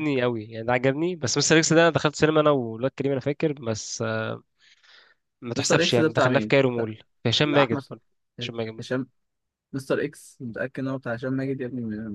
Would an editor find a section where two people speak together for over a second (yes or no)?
yes